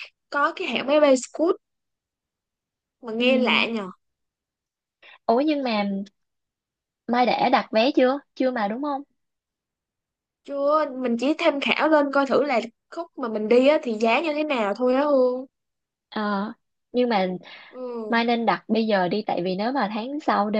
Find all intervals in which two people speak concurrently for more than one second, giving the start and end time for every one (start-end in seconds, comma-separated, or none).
none